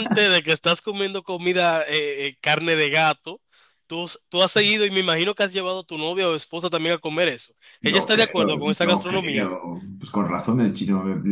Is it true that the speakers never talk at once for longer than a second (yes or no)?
no